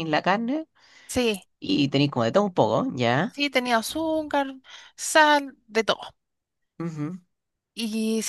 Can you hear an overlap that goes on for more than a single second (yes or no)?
no